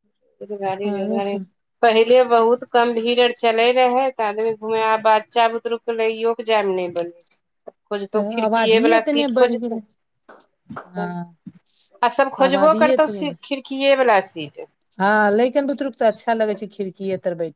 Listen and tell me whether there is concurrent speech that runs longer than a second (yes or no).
yes